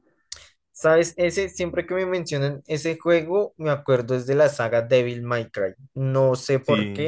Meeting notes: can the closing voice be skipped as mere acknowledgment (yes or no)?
yes